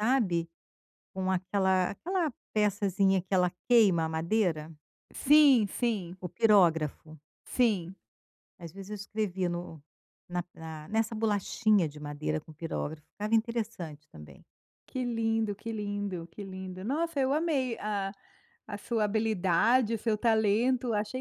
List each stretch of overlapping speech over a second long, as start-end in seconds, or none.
none